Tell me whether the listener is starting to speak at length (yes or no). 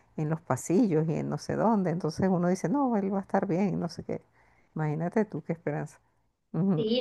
yes